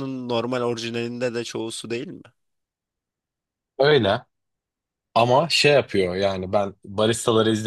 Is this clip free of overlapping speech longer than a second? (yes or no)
yes